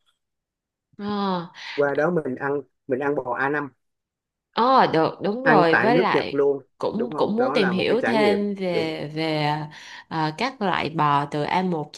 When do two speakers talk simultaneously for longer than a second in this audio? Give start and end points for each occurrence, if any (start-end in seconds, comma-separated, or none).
5.4-8.9